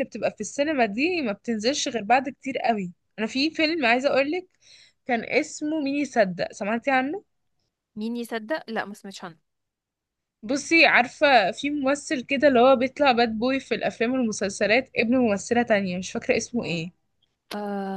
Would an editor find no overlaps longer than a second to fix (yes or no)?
yes